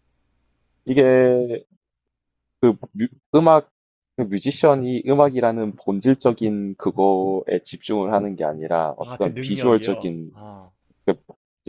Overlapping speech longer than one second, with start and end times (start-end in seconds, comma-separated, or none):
9.1-10.3